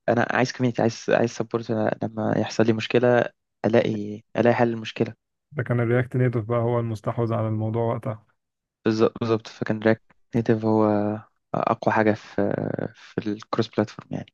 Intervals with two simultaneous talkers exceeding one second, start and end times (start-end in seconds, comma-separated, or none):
none